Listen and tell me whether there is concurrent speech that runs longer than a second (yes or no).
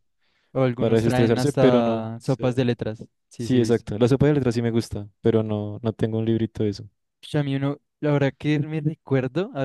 yes